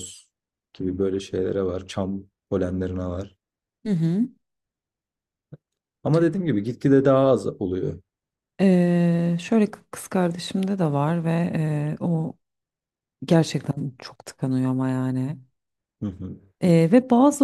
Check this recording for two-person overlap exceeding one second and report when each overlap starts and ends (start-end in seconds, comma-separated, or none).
none